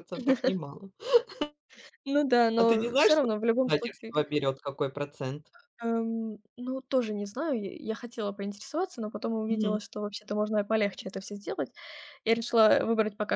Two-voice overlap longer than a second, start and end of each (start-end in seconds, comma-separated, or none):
2.6-4.1